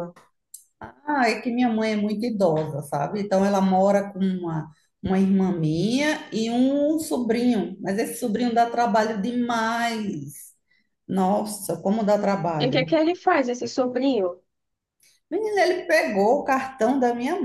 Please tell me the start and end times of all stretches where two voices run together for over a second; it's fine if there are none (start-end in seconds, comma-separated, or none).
none